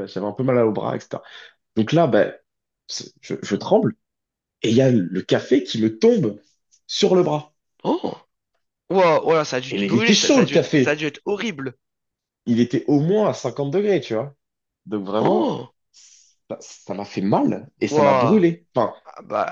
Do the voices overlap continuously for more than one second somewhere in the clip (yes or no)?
yes